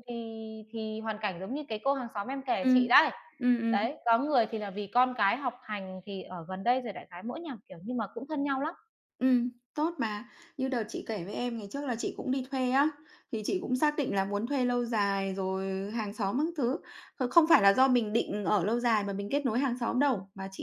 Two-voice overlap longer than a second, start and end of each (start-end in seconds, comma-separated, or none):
none